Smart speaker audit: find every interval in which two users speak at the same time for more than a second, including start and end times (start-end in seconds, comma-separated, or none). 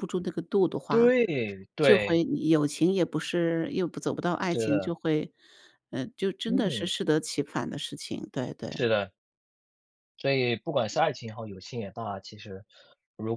none